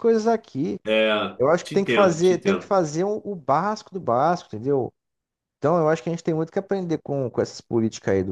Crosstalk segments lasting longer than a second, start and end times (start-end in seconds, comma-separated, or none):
1.4-2.7